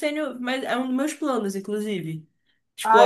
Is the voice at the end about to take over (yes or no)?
yes